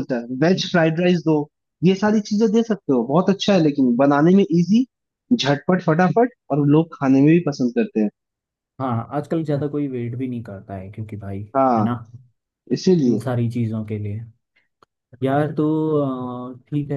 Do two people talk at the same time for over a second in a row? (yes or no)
no